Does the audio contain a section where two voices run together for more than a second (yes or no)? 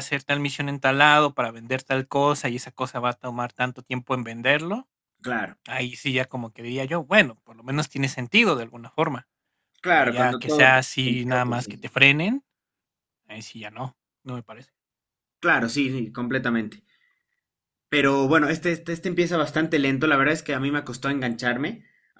yes